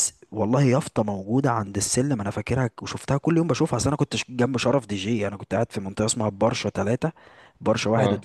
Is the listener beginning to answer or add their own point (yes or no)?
no